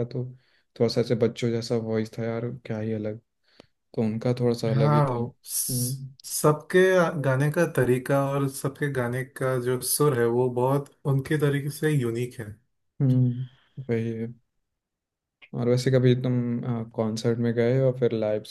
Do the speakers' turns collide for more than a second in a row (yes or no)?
yes